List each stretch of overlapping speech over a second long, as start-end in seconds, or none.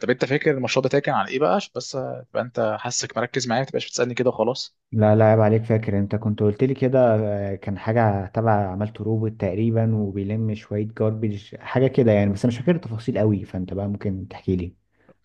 none